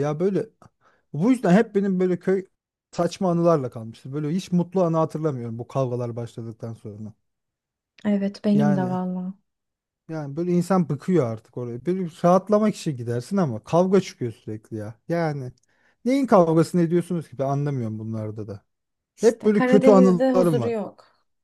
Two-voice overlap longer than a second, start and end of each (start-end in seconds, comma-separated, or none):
19.2-20.7